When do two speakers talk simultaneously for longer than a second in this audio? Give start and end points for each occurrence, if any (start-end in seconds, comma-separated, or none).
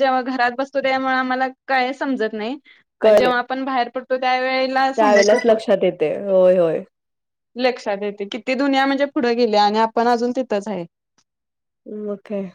none